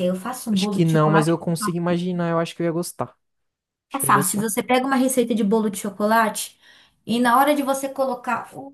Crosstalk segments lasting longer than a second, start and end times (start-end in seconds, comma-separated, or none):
0.5-1.9